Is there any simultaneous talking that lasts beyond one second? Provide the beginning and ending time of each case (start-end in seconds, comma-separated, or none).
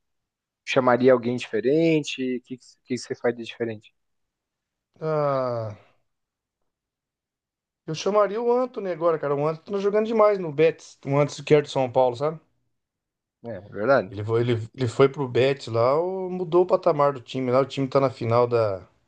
none